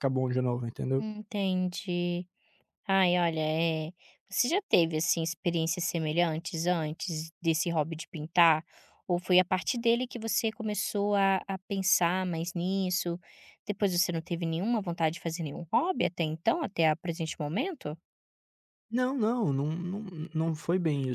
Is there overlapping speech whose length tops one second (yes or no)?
no